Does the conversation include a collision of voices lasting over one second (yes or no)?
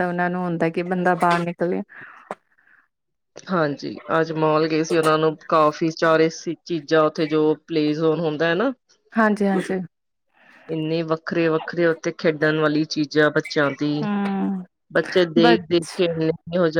no